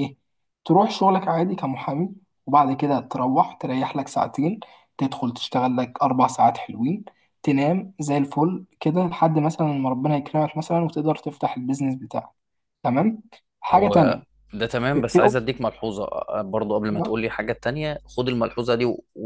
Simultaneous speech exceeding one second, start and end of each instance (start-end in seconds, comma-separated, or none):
none